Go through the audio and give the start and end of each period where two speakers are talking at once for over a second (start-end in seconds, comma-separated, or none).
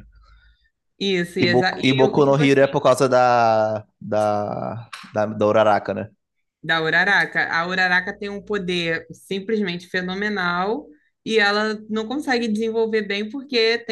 1.4-2.6